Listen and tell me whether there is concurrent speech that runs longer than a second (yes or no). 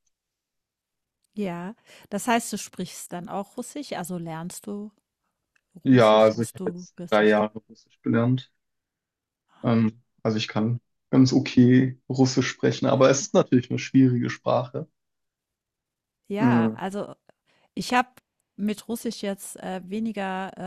yes